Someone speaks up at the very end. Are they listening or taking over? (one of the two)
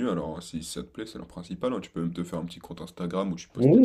taking over